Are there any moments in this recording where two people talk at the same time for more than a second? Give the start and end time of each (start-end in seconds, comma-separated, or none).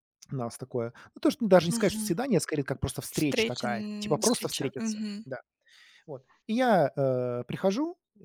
3.1-5.3